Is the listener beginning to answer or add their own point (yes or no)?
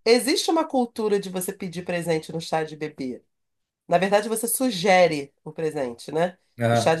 no